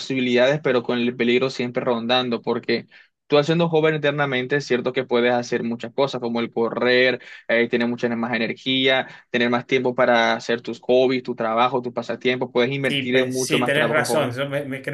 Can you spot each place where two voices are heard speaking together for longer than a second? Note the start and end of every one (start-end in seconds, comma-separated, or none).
12.8-14.3